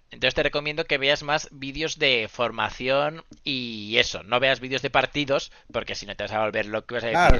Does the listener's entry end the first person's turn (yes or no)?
yes